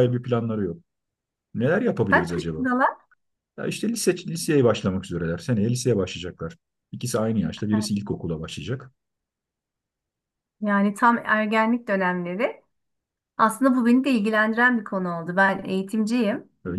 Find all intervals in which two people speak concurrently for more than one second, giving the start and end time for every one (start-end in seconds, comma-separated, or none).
none